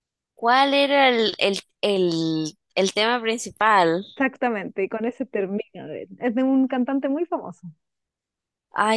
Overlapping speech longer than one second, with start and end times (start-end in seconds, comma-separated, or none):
none